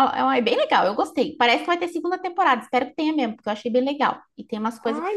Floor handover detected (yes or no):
yes